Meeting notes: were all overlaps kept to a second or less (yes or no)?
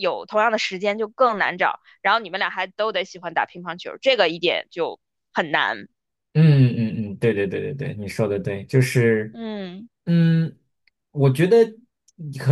yes